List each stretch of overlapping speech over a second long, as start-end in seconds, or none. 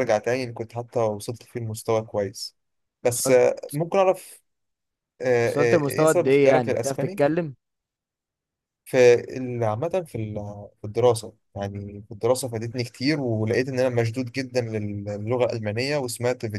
5.4-7.2